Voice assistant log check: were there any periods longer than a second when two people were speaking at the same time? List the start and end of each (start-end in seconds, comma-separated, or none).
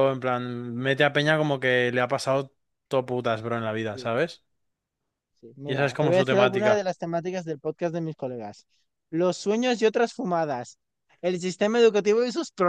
5.7-6.8